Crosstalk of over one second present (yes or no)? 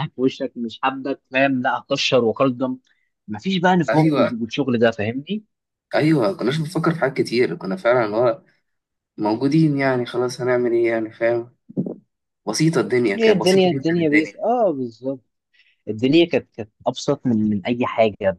yes